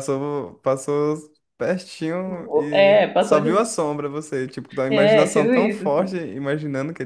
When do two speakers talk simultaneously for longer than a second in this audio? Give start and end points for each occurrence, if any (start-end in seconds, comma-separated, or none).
2.3-3.7, 4.9-6.2